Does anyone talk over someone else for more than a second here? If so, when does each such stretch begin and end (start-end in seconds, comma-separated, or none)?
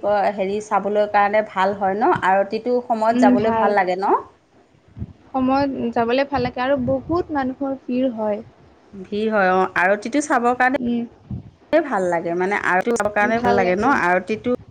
none